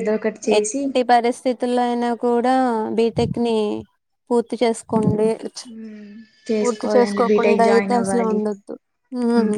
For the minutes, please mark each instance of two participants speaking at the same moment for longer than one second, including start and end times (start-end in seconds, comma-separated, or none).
6.6-8.4